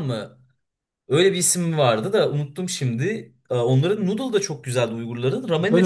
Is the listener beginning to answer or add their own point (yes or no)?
yes